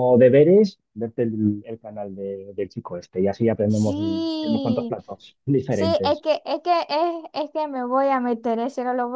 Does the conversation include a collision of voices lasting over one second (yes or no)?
yes